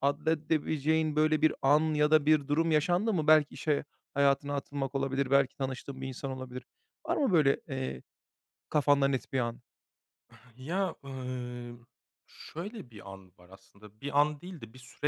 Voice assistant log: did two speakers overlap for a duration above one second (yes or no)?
no